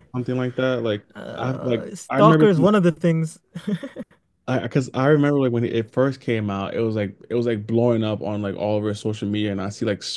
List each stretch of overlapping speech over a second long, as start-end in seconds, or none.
1.1-2.7